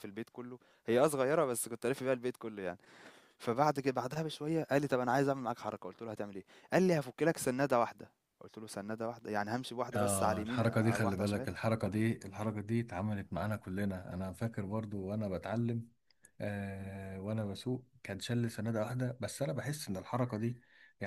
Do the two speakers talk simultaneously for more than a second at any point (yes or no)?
yes